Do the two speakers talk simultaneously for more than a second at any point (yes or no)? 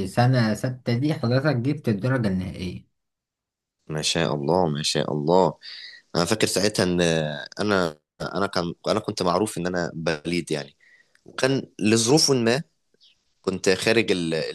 no